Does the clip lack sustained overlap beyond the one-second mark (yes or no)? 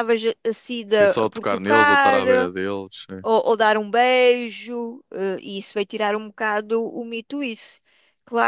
no